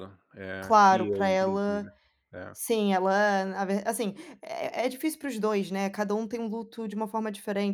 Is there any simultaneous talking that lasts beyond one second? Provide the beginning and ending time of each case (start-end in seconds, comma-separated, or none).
0.6-1.9